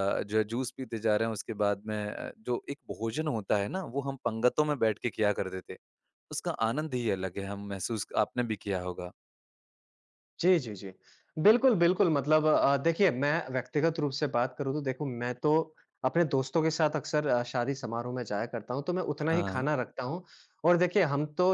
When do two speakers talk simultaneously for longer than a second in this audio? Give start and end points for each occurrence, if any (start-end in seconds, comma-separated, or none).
none